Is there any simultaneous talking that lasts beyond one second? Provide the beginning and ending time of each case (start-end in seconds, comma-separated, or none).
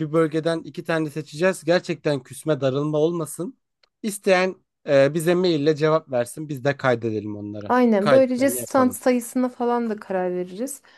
7.7-9.0